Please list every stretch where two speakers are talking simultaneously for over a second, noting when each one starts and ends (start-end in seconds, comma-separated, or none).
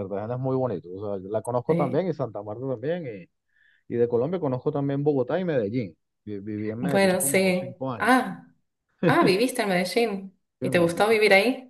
6.8-8.3